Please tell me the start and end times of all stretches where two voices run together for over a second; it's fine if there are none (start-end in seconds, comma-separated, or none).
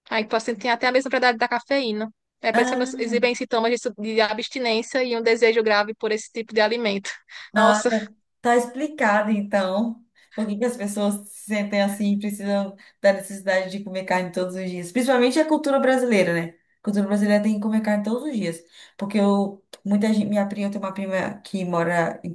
none